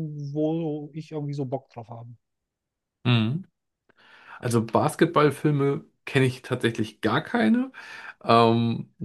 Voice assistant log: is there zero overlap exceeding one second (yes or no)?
yes